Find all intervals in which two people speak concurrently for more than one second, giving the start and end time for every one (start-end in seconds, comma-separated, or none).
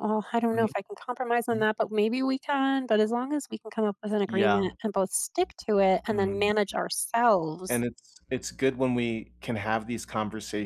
none